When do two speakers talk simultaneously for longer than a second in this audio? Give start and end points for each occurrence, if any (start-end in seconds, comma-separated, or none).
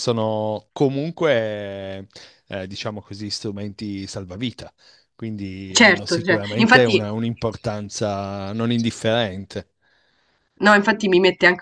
5.8-7.1